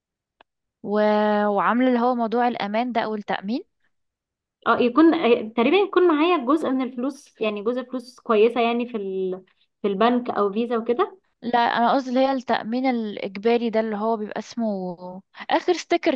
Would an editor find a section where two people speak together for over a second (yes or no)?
no